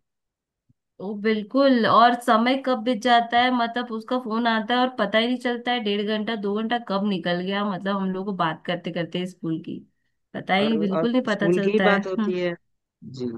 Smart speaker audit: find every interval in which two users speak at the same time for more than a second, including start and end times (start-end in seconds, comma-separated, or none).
10.6-12.4